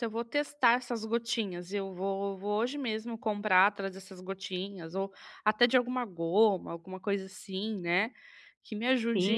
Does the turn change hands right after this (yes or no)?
yes